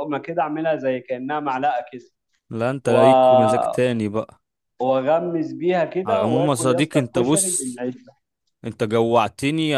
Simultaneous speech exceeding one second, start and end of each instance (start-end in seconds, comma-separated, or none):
6.0-7.8